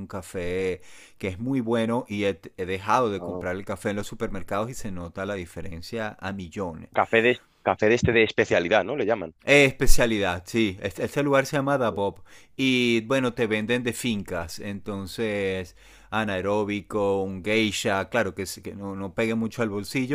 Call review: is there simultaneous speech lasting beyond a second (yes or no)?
no